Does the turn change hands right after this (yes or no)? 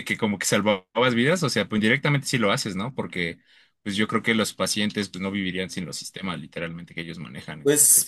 yes